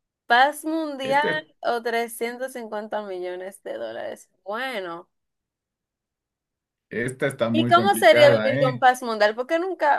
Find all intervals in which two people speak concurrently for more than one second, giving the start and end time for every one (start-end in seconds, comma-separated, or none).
7.5-8.8